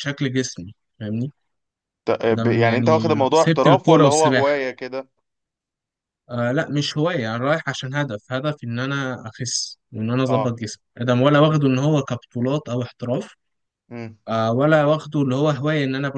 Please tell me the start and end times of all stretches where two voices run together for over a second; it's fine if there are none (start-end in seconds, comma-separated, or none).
2.3-4.5